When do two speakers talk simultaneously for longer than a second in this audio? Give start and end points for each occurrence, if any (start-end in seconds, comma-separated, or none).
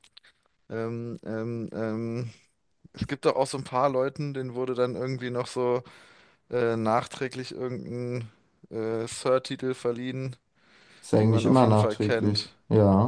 11.2-12.5